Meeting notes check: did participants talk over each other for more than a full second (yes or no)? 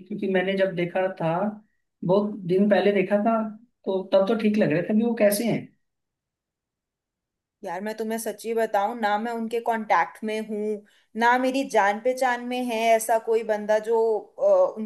no